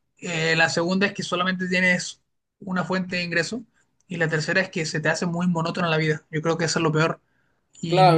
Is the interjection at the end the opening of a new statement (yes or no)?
yes